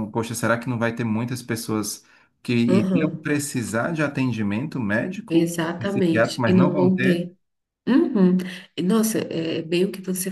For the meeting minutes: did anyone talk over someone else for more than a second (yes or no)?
yes